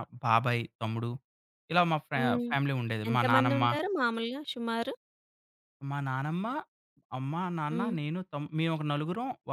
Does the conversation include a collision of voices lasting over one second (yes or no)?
no